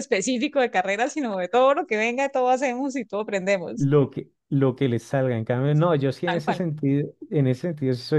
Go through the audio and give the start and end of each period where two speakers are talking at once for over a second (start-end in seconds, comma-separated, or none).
none